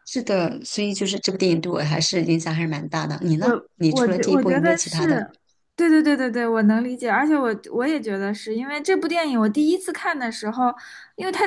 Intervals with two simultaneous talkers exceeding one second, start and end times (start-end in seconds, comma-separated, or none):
3.4-5.2